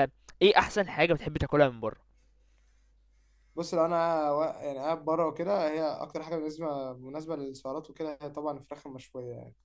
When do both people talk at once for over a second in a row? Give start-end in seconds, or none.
none